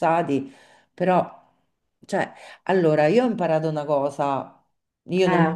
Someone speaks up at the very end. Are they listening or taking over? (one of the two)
listening